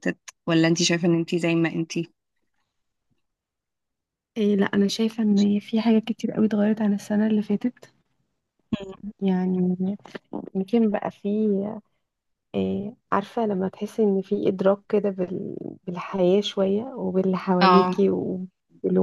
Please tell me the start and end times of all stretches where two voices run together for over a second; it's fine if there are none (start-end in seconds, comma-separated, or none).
none